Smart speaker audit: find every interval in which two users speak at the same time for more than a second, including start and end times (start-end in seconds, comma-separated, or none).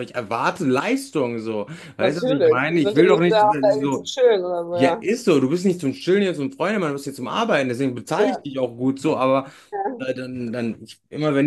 2.0-4.0